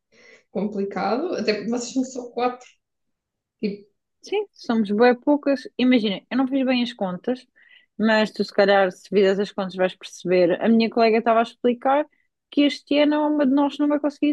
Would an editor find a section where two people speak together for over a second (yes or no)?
no